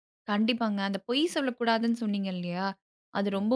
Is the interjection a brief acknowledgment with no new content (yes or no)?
yes